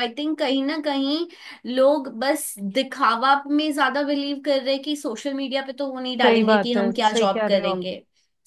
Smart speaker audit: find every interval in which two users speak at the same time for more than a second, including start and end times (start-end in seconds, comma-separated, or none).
6.2-7.8